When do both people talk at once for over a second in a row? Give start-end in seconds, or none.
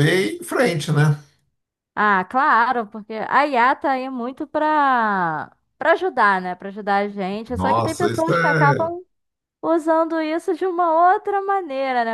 7.5-8.9